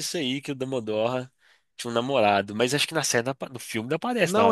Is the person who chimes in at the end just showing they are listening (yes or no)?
no